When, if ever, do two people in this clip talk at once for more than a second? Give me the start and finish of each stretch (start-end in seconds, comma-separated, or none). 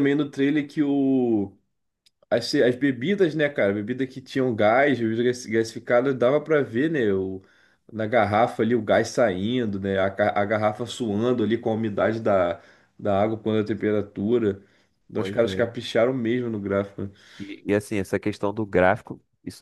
none